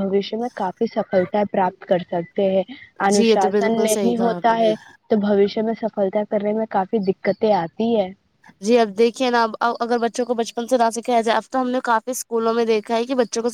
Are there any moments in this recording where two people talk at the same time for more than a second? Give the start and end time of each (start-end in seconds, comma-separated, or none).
3.1-4.7